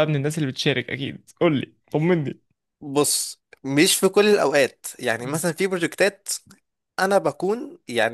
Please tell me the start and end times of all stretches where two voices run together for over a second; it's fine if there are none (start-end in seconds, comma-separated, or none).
none